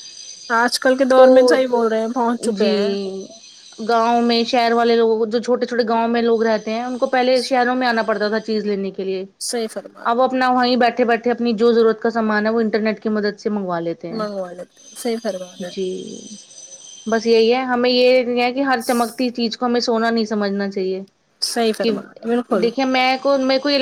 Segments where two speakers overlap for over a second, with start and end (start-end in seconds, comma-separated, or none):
none